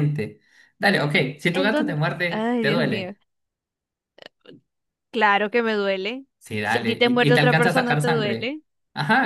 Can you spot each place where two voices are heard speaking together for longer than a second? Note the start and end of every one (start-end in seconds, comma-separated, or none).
1.5-3.1, 6.6-8.6